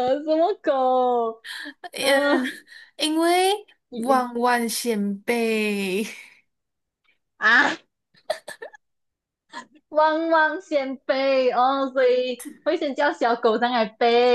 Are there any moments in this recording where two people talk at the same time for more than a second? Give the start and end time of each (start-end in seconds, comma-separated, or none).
none